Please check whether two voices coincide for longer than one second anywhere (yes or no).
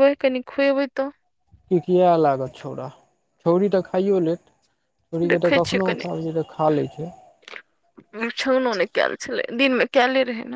no